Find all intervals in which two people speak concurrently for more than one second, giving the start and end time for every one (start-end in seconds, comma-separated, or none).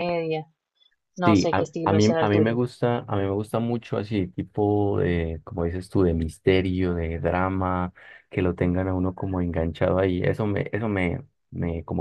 1.2-2.6